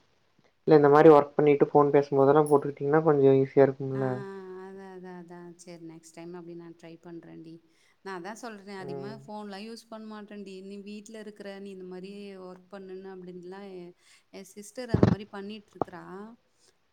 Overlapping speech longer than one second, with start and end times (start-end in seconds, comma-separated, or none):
none